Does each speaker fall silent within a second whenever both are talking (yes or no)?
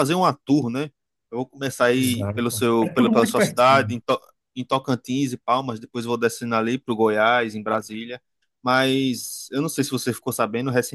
no